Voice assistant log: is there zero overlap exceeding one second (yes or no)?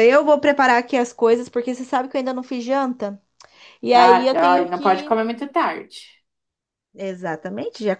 no